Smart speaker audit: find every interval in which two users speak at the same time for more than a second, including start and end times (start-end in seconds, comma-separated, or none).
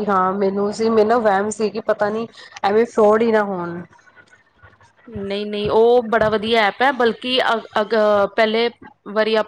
none